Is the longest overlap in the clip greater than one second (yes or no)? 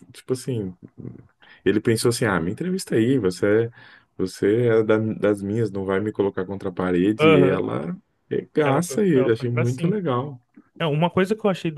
yes